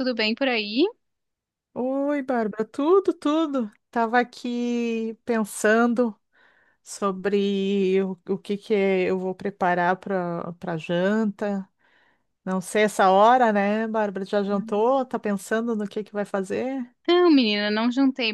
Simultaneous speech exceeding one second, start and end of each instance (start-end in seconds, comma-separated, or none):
none